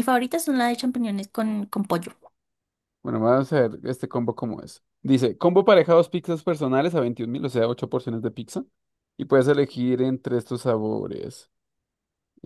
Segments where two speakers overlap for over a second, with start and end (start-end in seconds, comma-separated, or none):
none